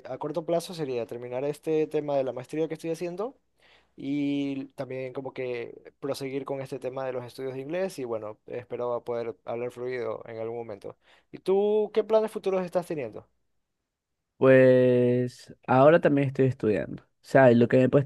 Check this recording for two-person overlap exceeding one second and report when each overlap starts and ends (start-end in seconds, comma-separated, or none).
none